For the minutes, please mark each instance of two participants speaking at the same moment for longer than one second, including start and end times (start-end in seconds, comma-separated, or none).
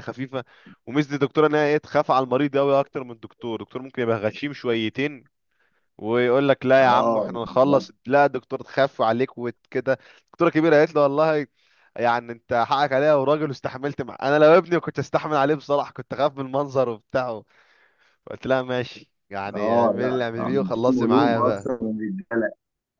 19.5-21.7